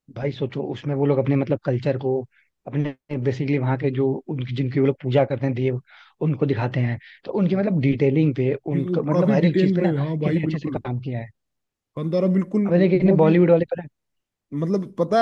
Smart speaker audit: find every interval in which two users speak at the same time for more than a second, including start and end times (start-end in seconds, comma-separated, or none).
8.7-10.8